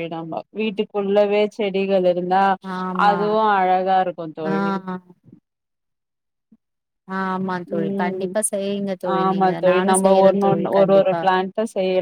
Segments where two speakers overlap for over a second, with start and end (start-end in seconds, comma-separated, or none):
9.2-11.2